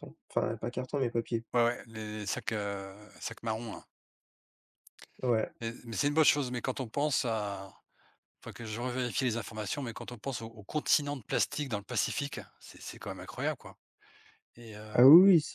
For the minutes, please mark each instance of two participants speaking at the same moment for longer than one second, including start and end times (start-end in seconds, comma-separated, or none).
none